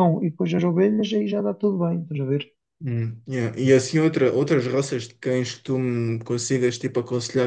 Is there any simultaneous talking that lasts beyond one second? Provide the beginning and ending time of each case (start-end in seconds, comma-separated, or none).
none